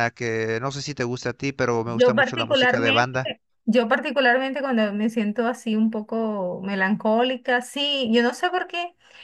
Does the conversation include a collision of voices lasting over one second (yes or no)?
yes